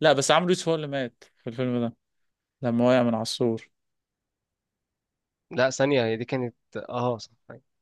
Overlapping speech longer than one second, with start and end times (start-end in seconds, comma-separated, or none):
none